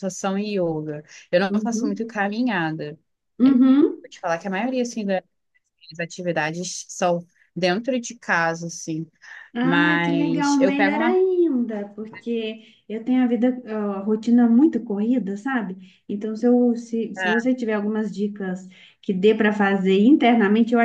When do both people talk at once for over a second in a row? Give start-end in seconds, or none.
9.6-11.2